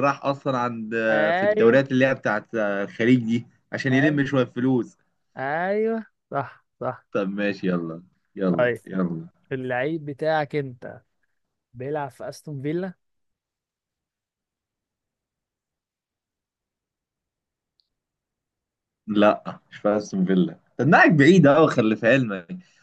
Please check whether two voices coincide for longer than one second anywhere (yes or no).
no